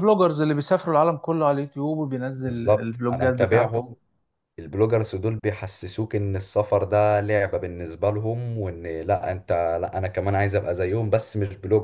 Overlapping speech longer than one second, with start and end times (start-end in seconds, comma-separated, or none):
2.5-3.9